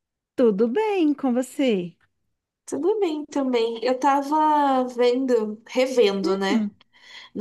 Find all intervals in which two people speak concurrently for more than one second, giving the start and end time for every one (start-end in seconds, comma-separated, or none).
none